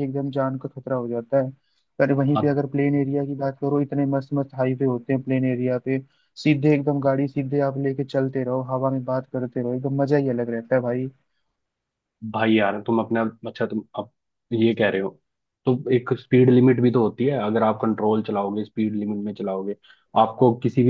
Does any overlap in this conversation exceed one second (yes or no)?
no